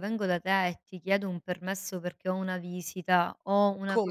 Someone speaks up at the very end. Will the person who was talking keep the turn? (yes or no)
yes